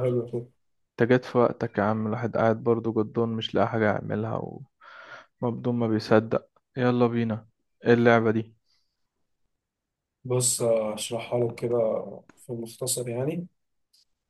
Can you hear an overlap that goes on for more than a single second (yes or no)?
no